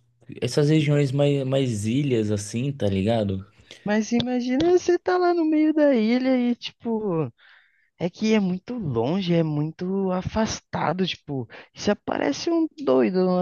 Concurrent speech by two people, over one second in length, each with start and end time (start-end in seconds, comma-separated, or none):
none